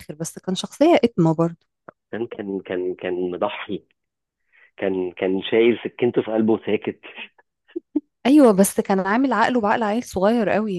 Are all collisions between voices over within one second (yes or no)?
yes